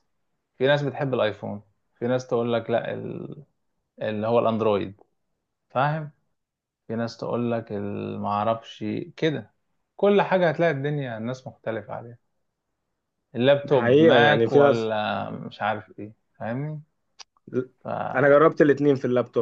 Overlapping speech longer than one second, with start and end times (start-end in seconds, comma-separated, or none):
13.6-14.9